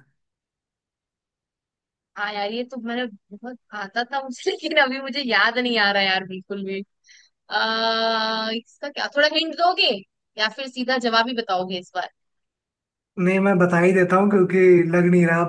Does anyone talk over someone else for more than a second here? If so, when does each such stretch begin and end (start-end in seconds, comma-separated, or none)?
none